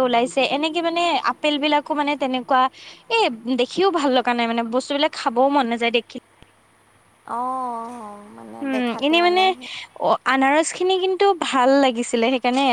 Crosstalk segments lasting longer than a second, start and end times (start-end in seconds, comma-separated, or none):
none